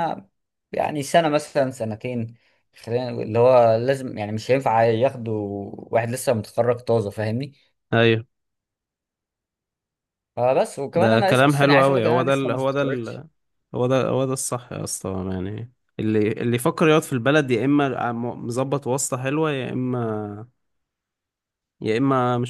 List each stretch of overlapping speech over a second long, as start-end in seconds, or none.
10.9-13.2